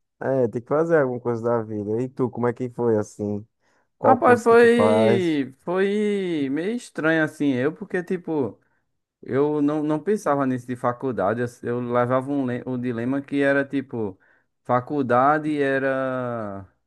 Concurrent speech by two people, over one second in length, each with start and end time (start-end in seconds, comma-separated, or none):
4.0-5.4